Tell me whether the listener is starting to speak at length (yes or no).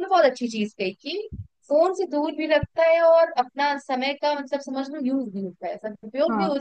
no